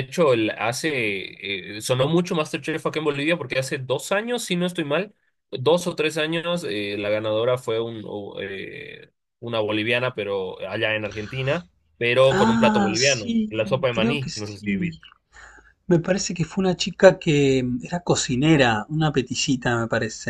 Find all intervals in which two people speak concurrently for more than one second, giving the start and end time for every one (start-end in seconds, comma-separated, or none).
12.3-15.0